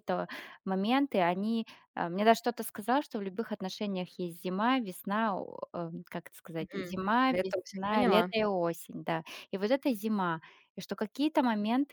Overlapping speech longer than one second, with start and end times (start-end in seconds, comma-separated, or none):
6.6-8.3